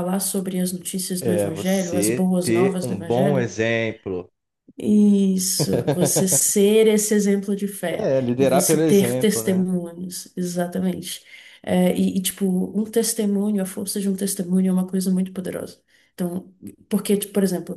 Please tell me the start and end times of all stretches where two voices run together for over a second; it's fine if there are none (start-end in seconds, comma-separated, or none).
1.2-3.5, 8.0-9.6